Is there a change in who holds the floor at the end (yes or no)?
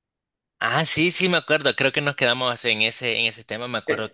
no